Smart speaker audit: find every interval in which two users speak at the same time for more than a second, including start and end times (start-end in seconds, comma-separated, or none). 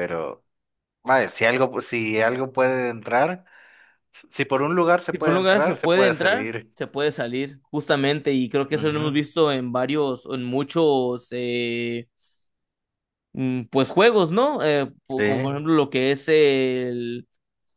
5.1-6.7